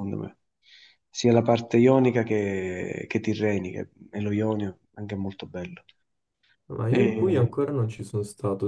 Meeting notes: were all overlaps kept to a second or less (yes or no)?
yes